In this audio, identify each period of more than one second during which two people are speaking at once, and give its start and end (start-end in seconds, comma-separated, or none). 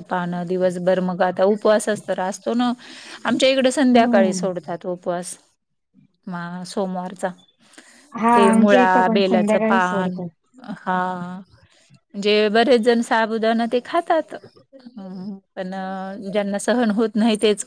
8.3-10.2